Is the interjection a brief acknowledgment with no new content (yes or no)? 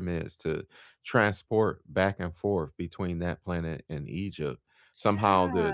yes